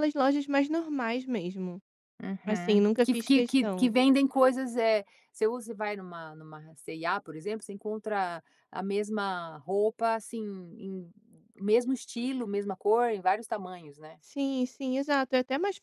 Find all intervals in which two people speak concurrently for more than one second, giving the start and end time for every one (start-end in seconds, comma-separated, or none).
2.5-3.9